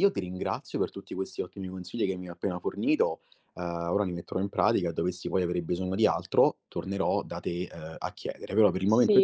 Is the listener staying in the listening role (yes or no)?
no